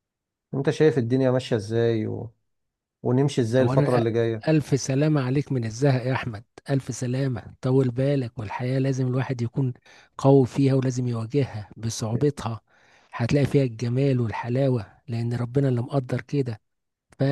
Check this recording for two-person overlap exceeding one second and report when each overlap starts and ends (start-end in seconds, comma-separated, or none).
none